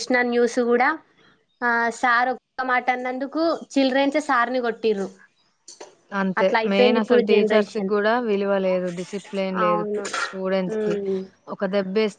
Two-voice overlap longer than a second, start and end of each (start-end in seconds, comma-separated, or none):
none